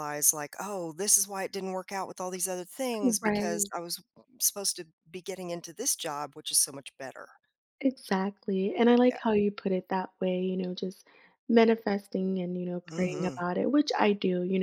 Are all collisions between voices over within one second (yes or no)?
yes